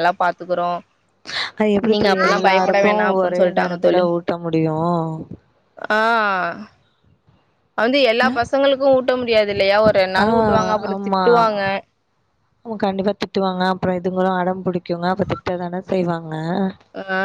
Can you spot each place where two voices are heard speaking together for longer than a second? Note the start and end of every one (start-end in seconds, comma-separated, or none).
1.9-4.0